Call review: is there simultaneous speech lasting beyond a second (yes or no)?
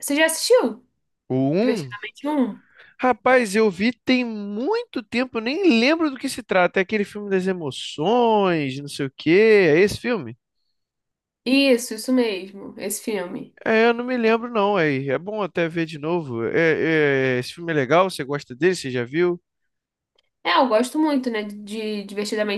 no